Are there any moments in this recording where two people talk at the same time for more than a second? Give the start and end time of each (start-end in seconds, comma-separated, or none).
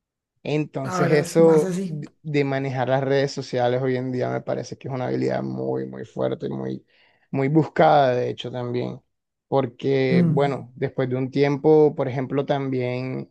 0.8-2.0